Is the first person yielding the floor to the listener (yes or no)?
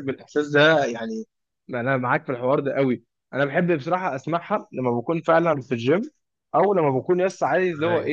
no